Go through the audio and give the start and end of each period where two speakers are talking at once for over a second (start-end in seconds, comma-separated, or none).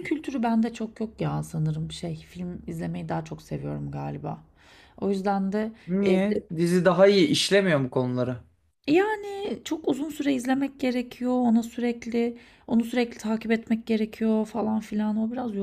none